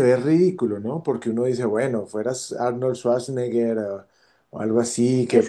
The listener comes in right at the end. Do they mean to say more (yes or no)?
yes